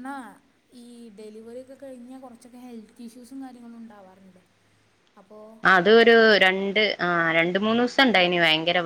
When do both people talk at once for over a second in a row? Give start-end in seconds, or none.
none